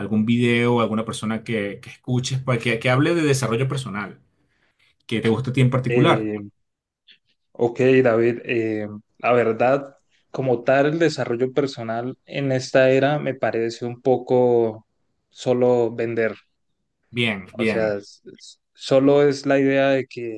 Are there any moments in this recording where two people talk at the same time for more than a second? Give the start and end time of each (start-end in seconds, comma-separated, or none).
none